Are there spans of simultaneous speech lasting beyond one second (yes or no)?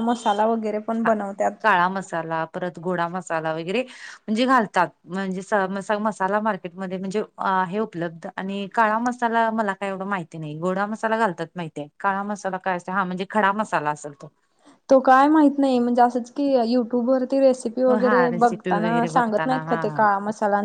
yes